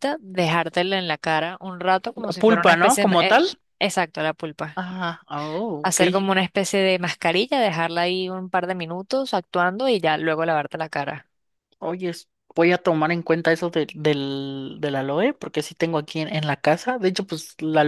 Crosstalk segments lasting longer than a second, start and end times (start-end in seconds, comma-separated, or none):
2.1-3.4